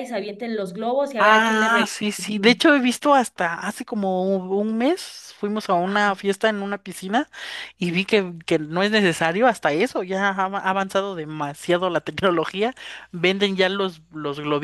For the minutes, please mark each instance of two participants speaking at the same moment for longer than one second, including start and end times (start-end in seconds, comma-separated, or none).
1.2-2.6